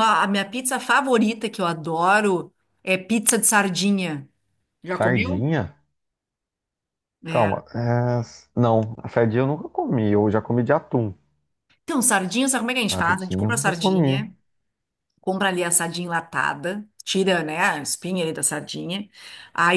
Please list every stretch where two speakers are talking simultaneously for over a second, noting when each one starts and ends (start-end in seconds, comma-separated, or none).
12.9-14.2